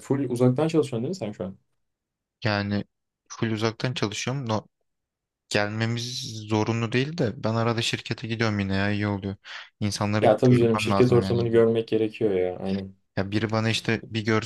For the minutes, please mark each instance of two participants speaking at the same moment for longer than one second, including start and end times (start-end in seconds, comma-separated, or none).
10.2-11.4